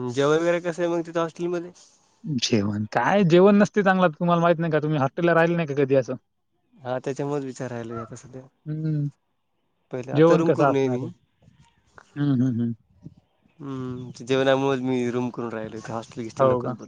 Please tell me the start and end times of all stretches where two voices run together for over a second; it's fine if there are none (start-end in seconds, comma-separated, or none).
none